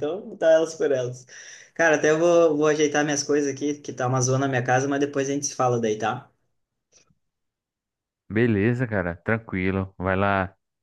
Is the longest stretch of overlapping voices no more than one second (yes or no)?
yes